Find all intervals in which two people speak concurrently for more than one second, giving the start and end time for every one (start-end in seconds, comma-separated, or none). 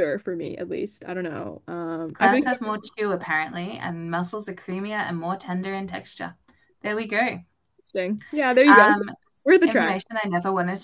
none